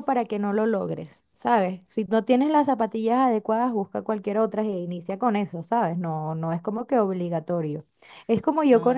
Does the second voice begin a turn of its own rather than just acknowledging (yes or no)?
no